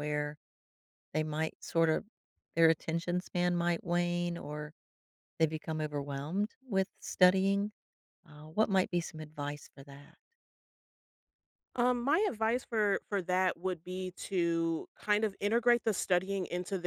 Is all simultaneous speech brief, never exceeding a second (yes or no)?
yes